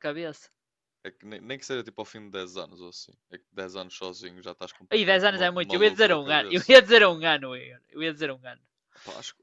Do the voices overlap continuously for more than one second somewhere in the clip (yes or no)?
yes